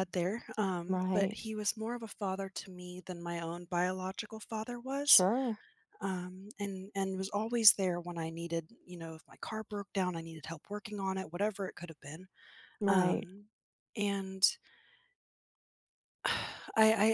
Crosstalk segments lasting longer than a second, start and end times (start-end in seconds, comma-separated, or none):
none